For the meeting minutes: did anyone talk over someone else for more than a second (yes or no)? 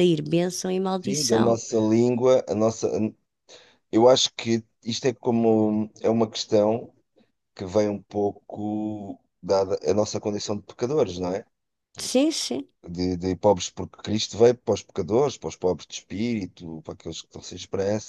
no